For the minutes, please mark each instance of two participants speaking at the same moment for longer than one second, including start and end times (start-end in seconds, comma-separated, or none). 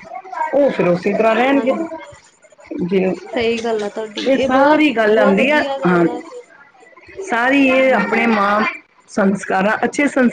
4.3-6.0